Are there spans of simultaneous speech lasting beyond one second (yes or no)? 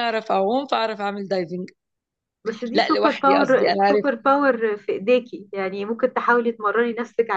yes